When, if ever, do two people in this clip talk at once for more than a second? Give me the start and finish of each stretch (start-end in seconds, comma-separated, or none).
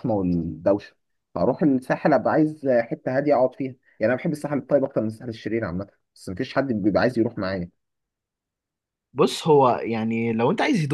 none